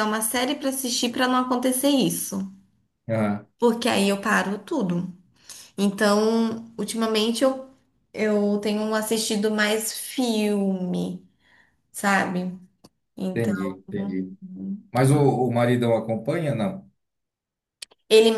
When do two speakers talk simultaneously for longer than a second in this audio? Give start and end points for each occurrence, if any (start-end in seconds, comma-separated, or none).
none